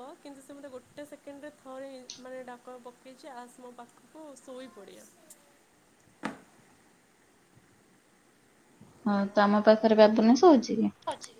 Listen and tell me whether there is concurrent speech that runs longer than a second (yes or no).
no